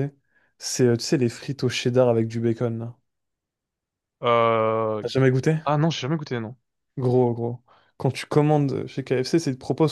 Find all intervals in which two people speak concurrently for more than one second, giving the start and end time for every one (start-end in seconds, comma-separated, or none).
none